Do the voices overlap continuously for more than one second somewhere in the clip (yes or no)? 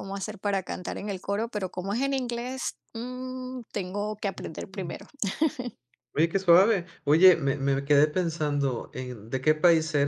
no